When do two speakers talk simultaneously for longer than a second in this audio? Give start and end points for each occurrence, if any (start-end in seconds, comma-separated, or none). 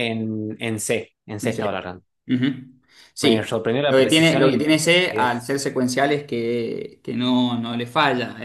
3.2-5.5